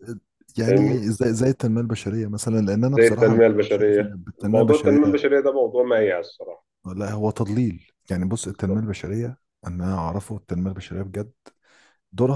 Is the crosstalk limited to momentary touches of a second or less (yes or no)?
no